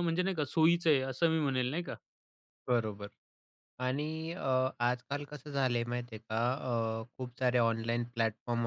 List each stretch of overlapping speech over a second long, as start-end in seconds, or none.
none